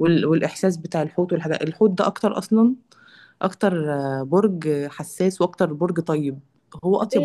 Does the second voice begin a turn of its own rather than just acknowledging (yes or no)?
yes